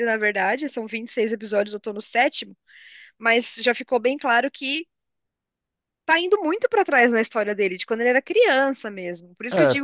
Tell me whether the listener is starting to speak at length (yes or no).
no